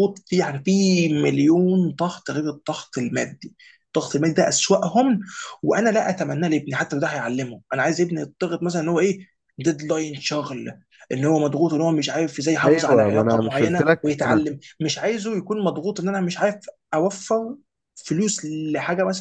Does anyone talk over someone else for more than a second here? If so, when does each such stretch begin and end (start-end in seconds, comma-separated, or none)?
12.7-14.4